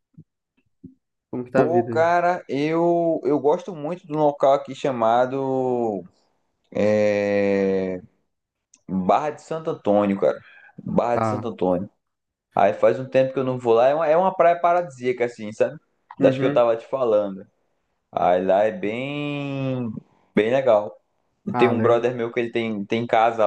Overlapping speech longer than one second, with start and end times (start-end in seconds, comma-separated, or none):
none